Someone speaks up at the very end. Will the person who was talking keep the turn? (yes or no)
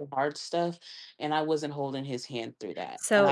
no